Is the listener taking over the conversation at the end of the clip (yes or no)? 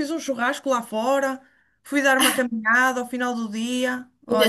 no